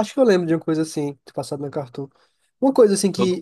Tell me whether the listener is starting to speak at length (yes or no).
no